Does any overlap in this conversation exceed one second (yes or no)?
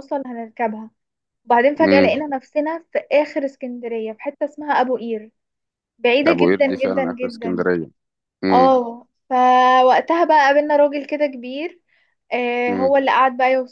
yes